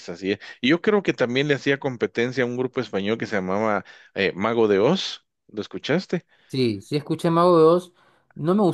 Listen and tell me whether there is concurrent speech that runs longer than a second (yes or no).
no